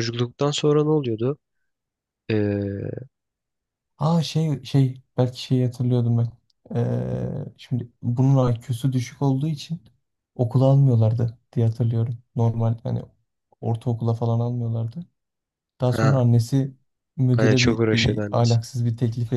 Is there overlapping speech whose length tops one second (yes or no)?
yes